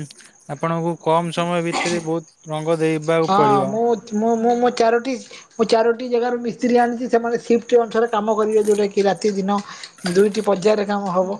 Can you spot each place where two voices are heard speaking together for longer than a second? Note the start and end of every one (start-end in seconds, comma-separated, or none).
none